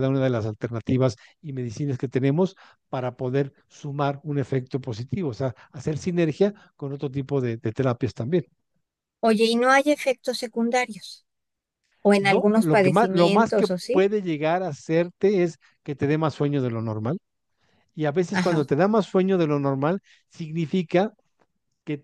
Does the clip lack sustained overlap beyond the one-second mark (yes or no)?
no